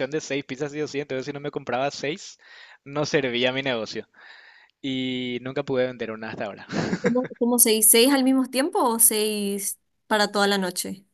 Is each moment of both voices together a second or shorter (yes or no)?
yes